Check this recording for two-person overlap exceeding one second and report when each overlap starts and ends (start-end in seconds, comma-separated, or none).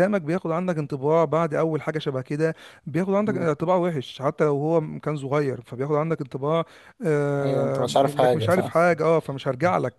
7.4-8.7